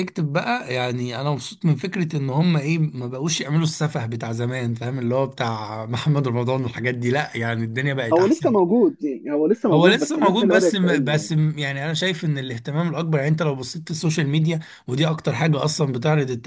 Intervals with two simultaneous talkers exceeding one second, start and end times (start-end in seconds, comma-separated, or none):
9.7-11.3